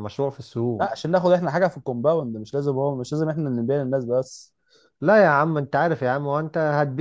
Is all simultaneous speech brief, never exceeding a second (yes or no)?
yes